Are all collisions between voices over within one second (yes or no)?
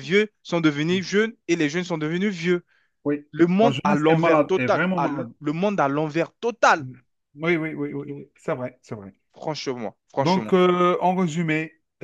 no